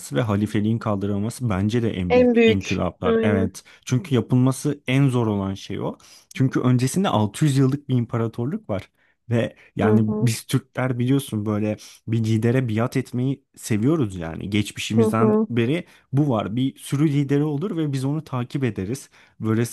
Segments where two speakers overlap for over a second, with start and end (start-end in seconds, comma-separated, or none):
2.1-3.5